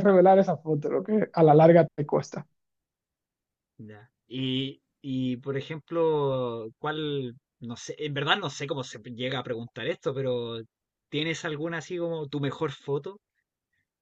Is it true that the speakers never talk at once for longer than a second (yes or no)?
yes